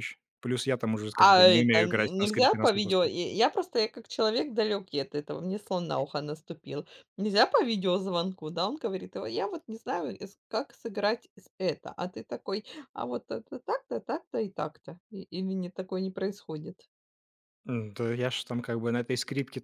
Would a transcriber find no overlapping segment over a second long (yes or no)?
no